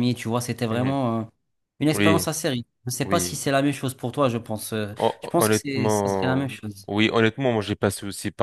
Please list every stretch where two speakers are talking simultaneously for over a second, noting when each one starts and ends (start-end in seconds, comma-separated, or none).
5.0-6.9